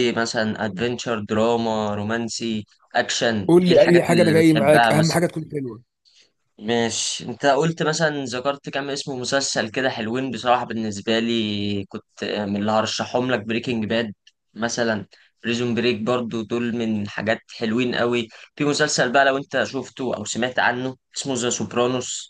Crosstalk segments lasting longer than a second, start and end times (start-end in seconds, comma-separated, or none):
3.5-5.2